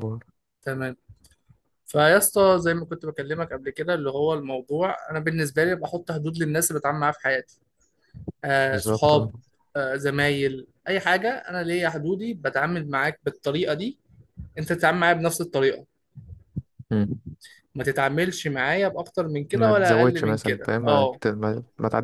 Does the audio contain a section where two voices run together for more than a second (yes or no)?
yes